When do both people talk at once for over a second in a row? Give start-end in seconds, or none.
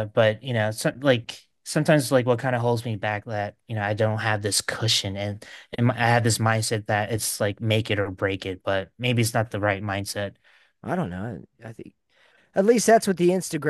none